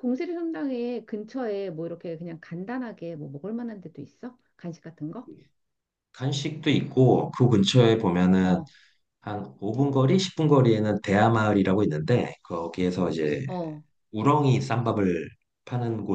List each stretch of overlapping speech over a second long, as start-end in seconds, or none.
none